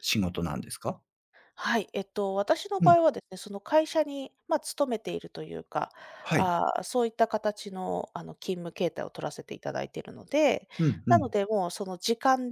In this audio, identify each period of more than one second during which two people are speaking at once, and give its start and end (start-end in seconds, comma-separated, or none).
none